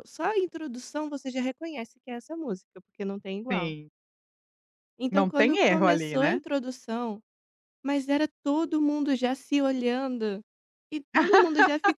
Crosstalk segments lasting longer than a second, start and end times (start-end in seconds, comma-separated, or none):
5.1-6.4